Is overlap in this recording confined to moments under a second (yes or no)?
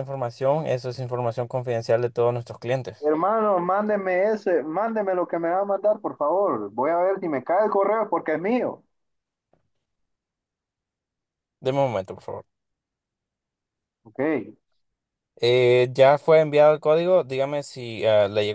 yes